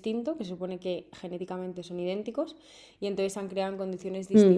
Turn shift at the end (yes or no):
no